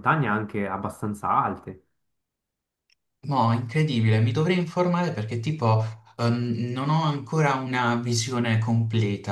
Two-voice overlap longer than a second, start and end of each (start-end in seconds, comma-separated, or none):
none